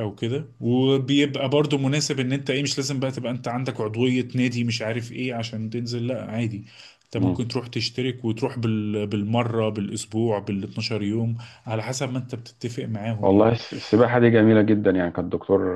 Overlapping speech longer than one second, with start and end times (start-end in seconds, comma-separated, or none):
none